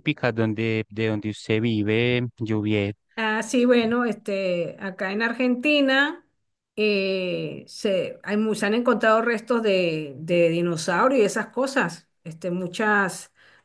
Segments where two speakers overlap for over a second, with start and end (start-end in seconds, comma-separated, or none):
none